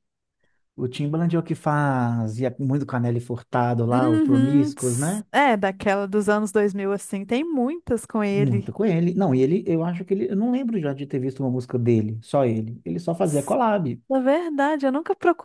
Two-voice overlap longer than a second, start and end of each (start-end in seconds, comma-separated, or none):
3.9-5.2